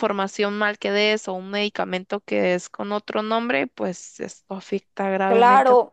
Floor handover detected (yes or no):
yes